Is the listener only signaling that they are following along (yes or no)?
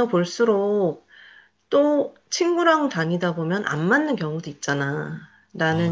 yes